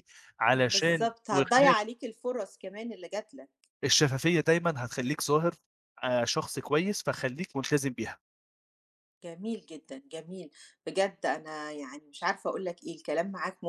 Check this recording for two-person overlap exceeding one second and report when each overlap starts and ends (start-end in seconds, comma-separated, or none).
0.5-1.8